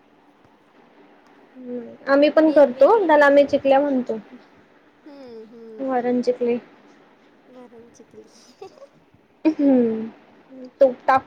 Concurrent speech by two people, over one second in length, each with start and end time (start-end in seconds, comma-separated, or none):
2.5-3.7